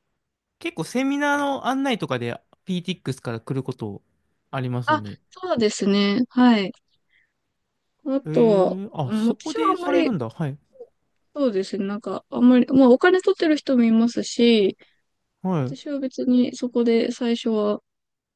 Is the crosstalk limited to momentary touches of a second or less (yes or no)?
no